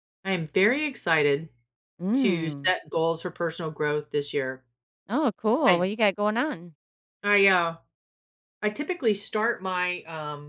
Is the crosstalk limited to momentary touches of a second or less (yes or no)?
yes